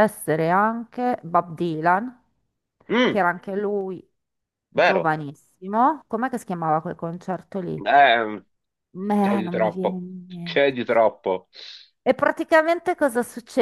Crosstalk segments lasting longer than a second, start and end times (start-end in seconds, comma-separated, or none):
9.2-10.8